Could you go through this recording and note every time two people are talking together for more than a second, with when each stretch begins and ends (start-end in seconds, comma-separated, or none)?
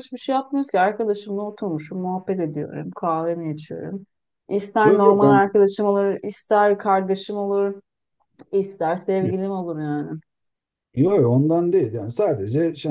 none